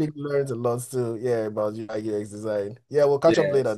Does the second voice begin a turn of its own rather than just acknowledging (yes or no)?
yes